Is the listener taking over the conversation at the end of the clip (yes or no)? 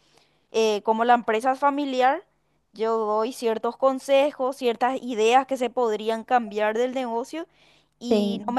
no